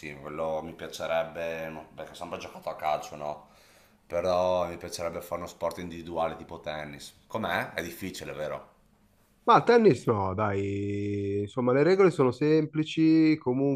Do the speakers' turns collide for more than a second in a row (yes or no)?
no